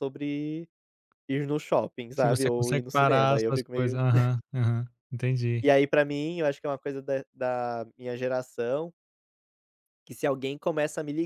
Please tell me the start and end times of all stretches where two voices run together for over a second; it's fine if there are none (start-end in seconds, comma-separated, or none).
2.2-4.0